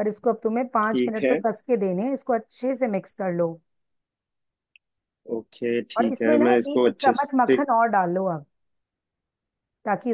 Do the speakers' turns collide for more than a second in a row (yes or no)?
yes